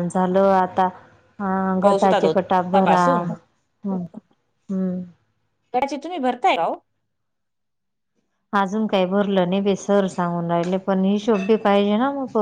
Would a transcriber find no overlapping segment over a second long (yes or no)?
no